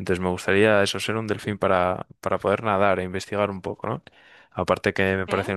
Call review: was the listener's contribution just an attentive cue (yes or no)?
yes